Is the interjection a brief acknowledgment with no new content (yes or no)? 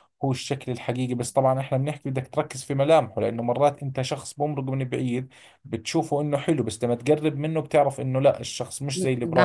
no